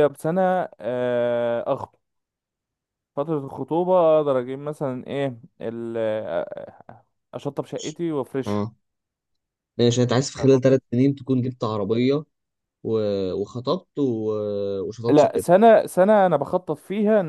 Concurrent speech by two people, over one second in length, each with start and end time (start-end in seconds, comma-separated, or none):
none